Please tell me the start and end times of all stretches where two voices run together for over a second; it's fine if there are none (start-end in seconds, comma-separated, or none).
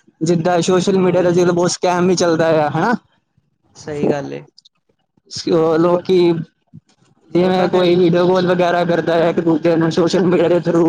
none